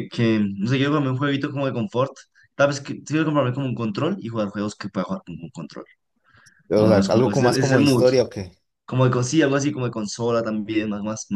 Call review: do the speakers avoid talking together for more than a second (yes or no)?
no